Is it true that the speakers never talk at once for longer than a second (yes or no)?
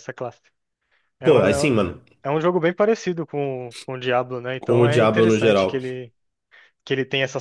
no